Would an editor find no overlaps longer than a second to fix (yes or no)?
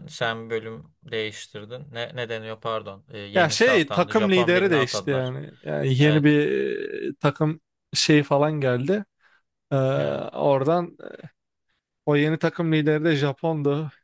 no